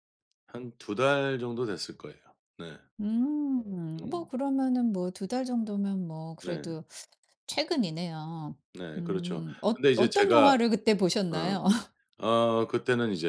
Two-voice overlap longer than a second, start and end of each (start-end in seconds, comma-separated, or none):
9.0-10.6